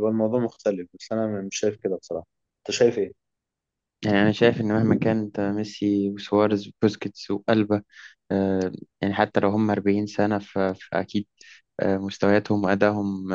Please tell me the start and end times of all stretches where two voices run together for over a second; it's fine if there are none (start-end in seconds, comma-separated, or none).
none